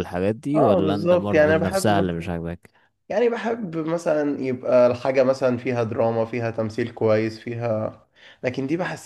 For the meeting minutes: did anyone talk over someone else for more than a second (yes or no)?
yes